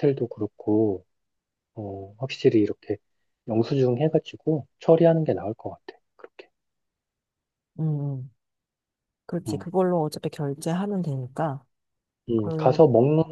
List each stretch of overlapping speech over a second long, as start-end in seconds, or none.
none